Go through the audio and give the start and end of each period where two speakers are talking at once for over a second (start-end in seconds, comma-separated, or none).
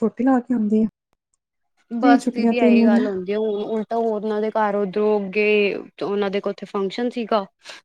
none